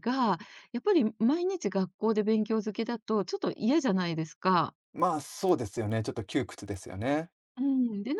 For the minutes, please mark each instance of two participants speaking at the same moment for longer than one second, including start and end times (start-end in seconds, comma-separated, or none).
none